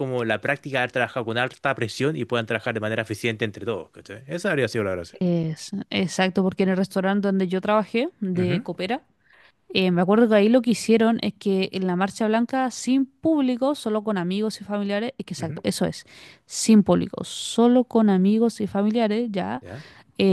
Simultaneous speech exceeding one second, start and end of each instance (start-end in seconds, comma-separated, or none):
none